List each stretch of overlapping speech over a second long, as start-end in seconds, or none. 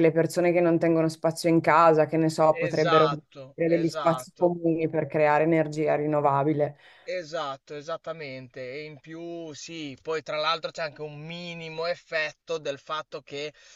2.6-4.5